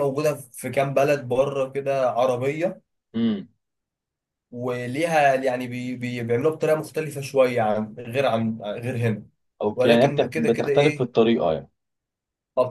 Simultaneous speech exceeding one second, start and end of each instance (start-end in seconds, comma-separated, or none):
9.7-11.1